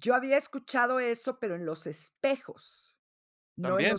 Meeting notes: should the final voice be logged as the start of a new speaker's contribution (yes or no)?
yes